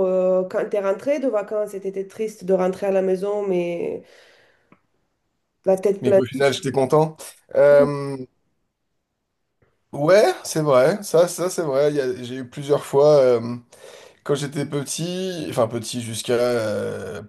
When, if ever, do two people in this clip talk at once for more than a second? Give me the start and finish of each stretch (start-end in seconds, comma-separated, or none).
none